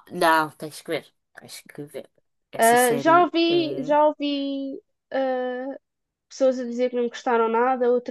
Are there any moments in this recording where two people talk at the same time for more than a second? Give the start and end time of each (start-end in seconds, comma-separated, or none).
2.6-4.0